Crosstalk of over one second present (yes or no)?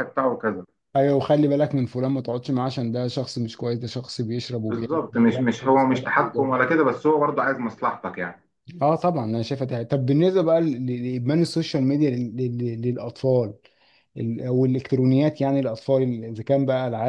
yes